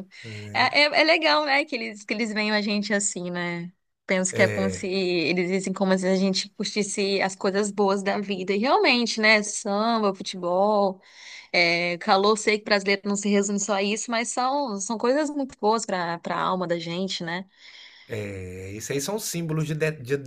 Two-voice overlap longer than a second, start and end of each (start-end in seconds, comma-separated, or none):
none